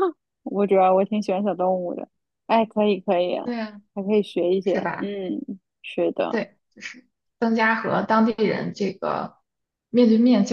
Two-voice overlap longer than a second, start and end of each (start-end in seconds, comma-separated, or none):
none